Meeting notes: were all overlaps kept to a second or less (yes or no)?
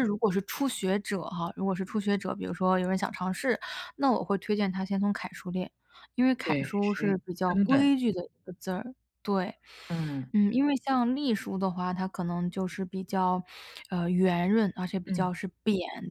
no